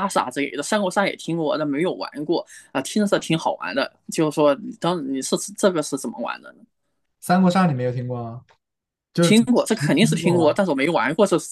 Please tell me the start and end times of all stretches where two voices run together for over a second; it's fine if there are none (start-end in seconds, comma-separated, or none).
9.2-10.6